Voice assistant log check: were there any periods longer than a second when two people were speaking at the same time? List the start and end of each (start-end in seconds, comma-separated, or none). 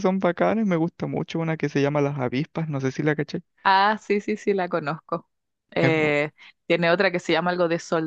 none